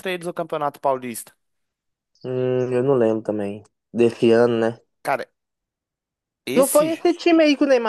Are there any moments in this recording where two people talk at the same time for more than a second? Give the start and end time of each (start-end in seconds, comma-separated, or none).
none